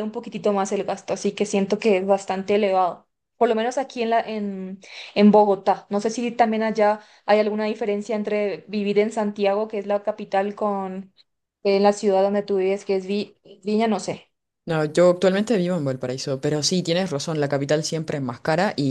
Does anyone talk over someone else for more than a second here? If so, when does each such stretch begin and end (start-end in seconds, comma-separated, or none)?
none